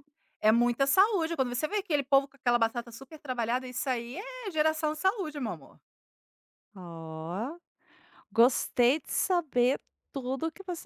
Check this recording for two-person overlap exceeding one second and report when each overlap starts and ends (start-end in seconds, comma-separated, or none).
none